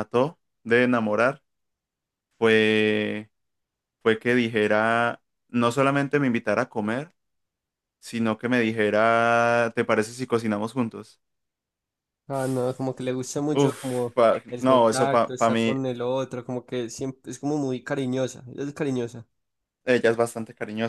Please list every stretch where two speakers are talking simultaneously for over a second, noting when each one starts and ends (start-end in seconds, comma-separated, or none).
13.5-15.8